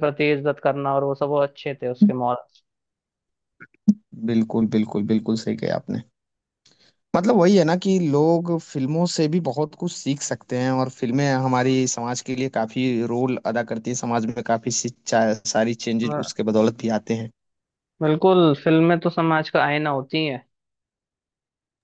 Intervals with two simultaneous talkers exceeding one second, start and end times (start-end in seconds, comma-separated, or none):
none